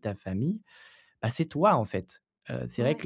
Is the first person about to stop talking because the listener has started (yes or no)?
no